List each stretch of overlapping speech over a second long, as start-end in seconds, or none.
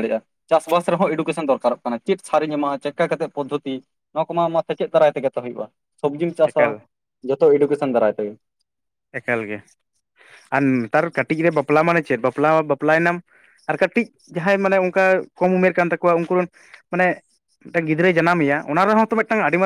none